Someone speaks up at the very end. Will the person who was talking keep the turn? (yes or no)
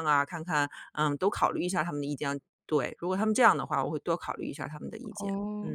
no